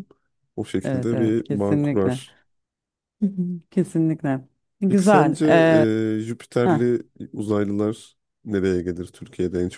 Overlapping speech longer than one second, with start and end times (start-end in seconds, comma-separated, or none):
0.8-2.2